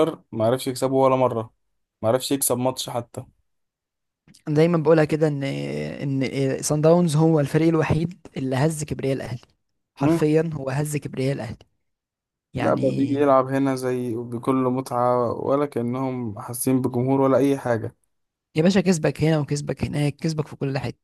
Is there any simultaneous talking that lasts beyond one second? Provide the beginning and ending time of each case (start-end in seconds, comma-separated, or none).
none